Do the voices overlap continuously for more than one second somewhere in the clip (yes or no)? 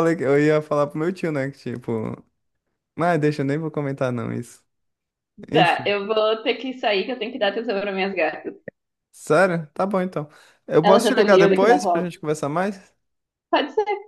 yes